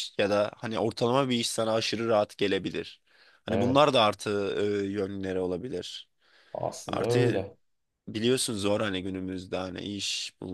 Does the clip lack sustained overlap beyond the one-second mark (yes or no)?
yes